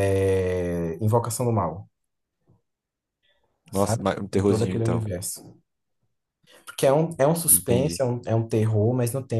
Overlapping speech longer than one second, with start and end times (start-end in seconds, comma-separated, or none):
3.7-5.1